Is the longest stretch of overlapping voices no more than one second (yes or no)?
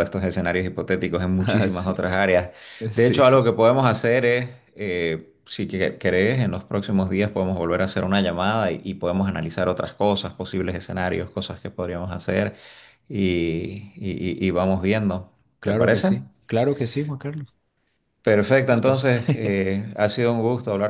yes